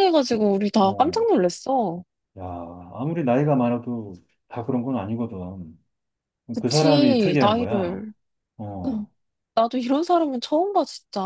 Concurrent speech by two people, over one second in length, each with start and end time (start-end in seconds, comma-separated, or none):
6.6-8.0